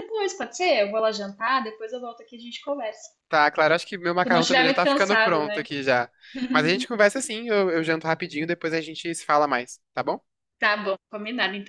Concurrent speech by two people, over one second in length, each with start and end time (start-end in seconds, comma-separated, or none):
4.2-5.6